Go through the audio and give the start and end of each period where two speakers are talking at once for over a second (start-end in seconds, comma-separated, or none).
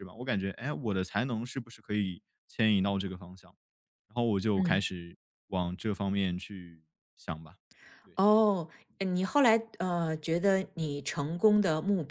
none